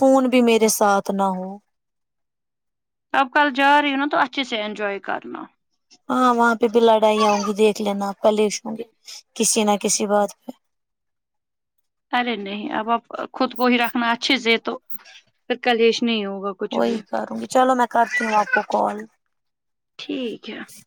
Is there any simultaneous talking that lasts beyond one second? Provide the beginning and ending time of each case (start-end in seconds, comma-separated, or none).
none